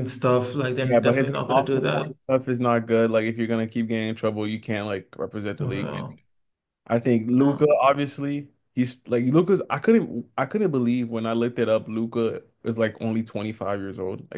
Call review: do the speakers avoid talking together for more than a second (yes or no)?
no